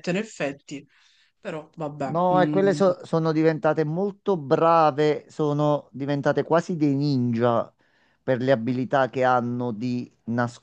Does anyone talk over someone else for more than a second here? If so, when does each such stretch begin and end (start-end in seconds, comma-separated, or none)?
none